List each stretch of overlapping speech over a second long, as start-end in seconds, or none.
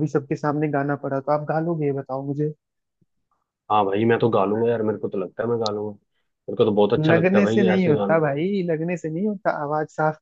7.0-8.2